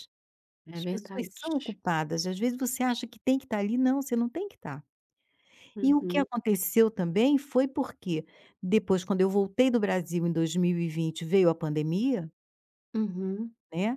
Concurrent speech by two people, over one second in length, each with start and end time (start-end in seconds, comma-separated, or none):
none